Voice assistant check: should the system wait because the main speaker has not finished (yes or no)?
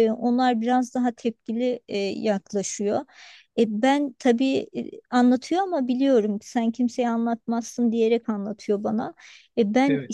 yes